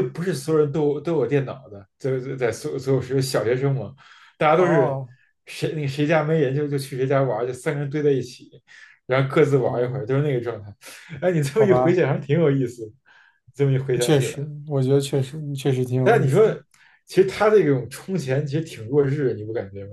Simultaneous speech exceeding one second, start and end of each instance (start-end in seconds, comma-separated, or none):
none